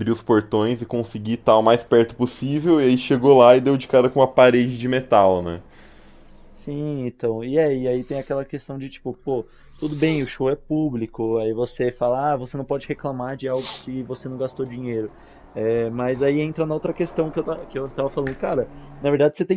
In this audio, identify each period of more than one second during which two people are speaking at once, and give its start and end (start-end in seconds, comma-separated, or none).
none